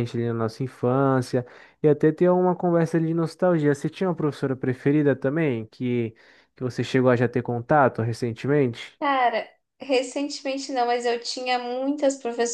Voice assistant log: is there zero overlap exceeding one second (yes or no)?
yes